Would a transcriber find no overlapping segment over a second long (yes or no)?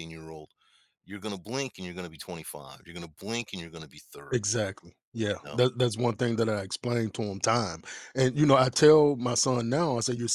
yes